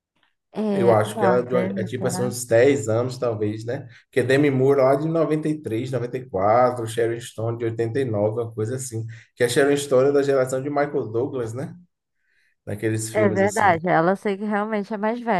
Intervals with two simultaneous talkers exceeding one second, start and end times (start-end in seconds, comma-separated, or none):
0.7-2.3